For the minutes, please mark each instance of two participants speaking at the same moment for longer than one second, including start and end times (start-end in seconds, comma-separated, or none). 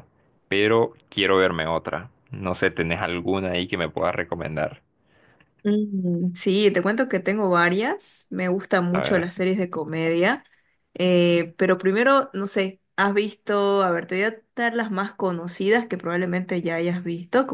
none